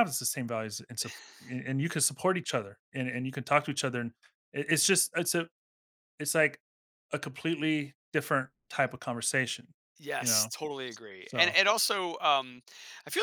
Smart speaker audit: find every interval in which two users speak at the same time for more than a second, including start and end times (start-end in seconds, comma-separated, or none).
none